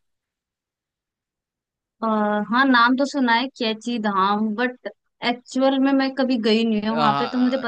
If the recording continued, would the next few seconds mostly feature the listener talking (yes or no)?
yes